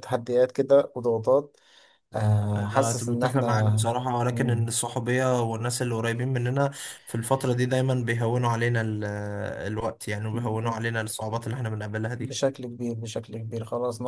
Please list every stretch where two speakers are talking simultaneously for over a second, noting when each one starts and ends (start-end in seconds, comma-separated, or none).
2.5-3.8